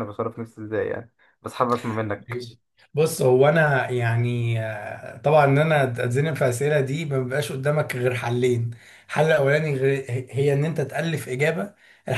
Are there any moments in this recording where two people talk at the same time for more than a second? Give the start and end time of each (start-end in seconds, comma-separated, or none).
none